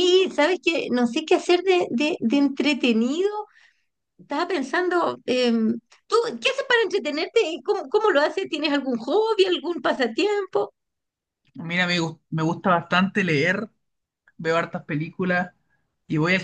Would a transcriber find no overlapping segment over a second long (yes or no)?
yes